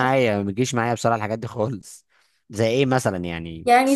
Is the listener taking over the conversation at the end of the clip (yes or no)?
yes